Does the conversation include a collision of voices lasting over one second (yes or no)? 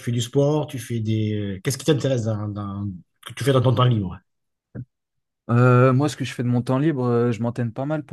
no